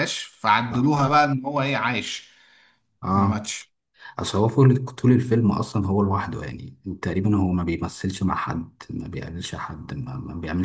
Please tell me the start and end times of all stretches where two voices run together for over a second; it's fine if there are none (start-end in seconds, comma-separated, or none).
none